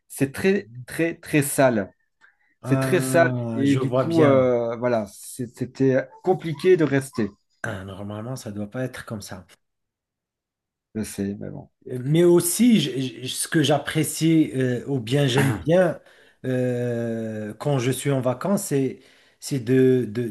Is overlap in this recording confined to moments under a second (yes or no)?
no